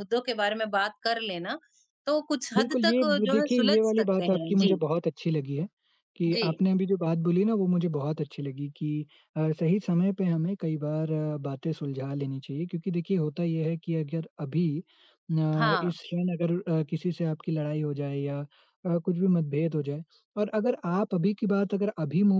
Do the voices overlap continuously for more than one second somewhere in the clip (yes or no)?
yes